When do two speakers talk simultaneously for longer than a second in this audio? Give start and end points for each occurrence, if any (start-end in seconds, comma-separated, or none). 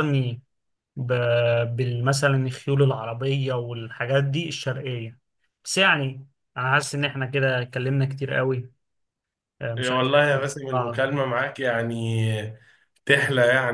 none